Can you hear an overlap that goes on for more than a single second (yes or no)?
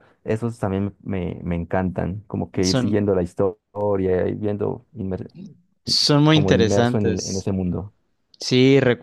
yes